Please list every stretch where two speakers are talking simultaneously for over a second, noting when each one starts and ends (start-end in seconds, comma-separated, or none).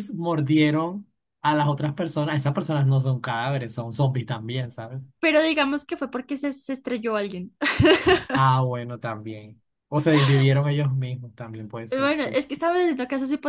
none